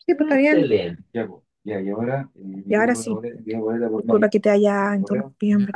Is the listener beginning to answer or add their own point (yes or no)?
yes